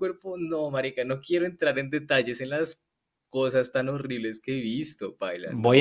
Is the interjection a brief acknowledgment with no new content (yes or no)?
no